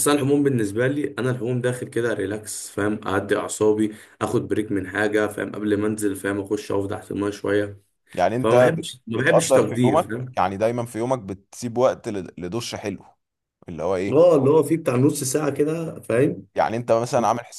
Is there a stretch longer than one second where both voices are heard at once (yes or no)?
yes